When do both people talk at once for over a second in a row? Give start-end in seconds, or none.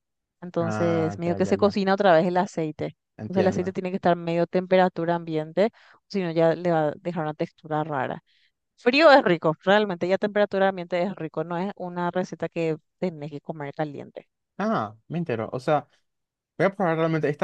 0.6-1.8